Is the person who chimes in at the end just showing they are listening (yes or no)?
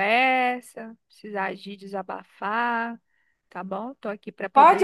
no